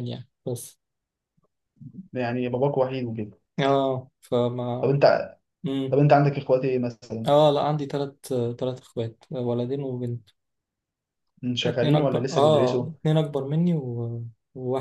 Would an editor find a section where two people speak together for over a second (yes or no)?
yes